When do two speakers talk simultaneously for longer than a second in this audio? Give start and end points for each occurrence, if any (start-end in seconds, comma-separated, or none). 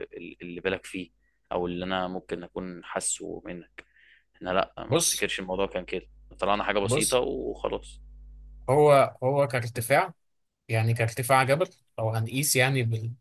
none